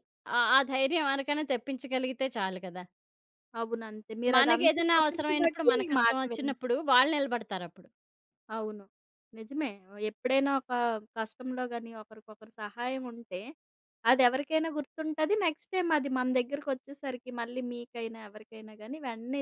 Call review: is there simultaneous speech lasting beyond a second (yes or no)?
yes